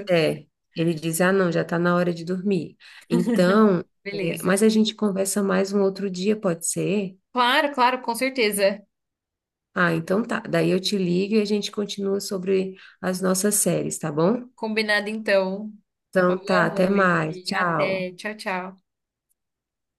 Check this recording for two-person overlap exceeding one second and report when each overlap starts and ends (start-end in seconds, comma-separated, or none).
16.3-18.1